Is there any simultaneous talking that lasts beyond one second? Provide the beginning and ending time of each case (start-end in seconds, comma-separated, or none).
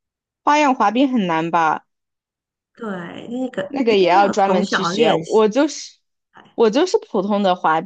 3.7-5.4